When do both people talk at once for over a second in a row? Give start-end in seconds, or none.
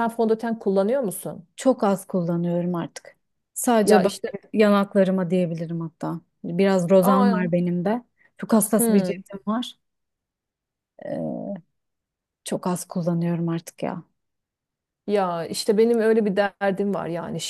none